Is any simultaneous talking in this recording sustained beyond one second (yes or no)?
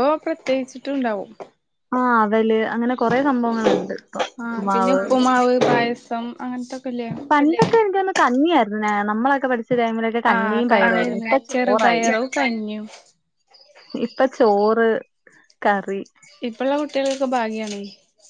yes